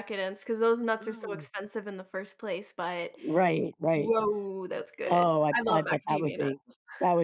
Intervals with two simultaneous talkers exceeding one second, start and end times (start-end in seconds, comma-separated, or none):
5.0-6.6